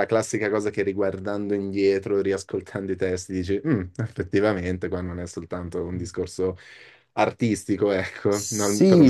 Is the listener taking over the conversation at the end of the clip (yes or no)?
yes